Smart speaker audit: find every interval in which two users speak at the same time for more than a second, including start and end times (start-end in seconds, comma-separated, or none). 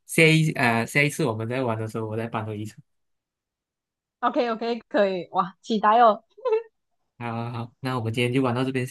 none